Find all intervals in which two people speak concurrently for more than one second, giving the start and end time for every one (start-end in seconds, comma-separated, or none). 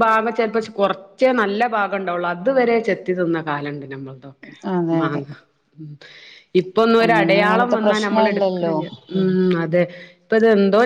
7.0-8.7